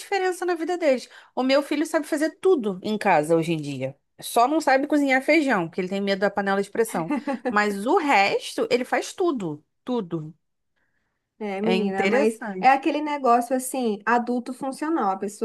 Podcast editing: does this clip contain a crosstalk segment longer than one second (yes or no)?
yes